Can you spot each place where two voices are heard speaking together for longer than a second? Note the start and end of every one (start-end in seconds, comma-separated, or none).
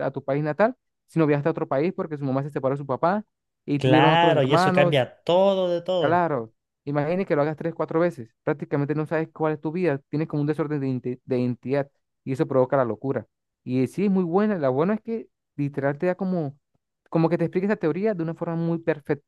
3.8-5.1